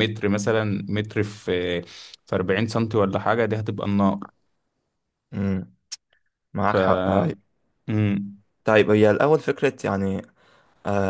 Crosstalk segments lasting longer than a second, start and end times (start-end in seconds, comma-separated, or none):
none